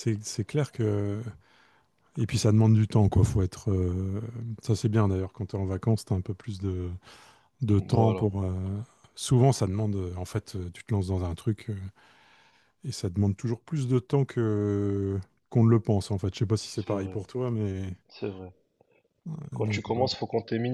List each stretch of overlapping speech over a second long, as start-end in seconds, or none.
none